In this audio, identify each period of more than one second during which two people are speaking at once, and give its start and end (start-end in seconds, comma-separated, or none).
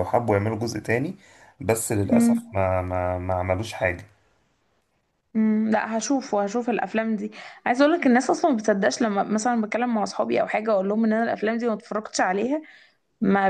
none